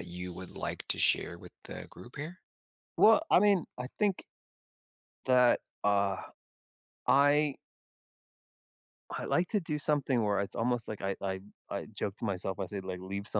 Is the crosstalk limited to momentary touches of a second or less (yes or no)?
yes